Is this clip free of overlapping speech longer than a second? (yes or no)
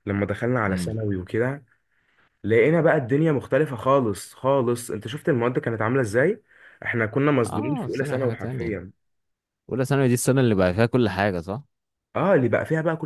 no